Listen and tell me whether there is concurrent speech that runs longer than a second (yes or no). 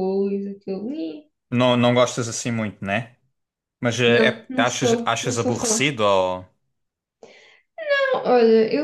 yes